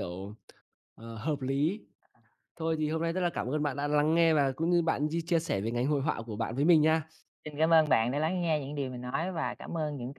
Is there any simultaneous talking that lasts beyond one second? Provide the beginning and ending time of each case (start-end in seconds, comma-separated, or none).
none